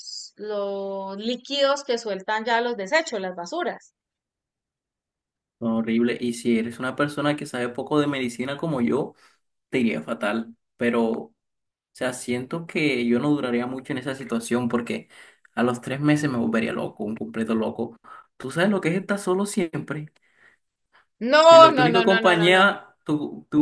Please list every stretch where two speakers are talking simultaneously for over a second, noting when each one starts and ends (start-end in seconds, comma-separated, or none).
21.5-22.7